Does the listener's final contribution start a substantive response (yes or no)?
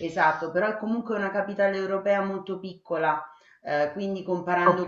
no